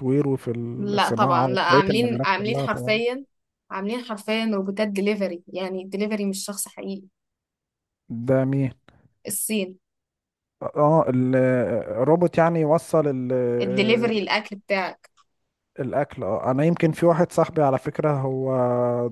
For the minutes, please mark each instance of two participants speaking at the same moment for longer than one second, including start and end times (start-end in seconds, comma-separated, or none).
0.9-3.0